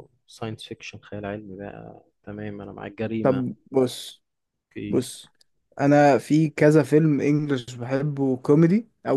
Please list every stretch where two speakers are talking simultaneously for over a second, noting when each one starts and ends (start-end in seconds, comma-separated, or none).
none